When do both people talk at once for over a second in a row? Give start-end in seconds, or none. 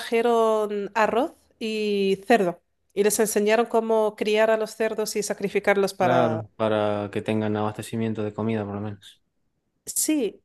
none